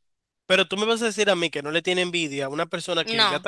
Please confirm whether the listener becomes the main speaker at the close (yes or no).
no